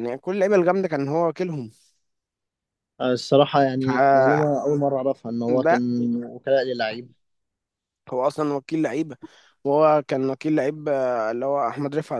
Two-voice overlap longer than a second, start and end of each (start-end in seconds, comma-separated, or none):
none